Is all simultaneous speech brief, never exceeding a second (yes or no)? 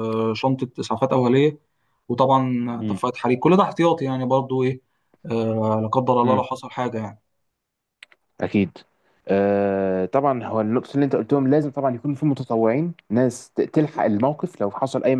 yes